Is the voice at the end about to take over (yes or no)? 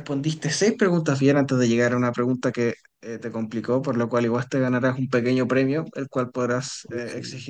no